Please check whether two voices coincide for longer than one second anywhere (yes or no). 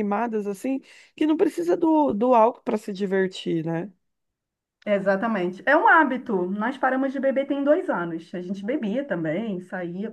no